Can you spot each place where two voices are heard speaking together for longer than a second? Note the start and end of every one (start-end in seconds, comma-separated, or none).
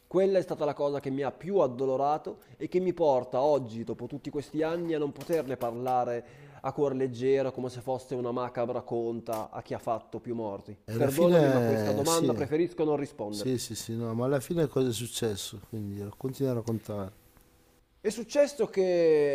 10.9-12.3